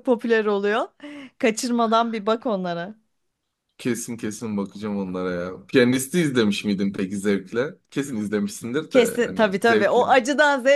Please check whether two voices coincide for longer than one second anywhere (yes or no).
yes